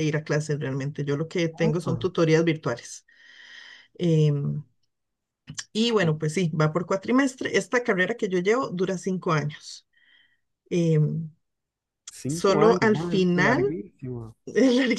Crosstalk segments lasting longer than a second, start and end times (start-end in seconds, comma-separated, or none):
12.3-13.6